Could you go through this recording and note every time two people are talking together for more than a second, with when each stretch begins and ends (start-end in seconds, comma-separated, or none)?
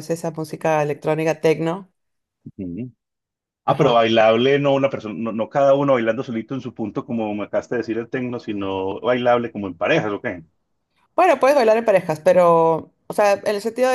none